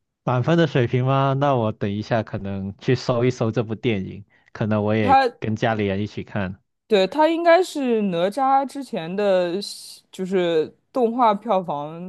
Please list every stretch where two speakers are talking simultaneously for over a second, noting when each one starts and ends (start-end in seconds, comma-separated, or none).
none